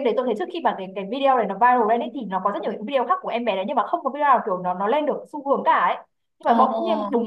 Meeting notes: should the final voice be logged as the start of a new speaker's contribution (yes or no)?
no